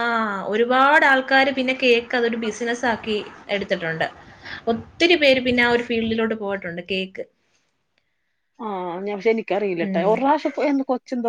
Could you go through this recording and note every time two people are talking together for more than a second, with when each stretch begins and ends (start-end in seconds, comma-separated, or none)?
none